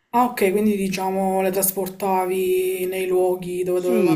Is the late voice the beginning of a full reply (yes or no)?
yes